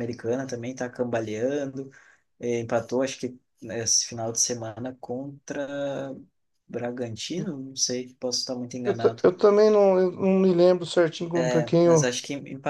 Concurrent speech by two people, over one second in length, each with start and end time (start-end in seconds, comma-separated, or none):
none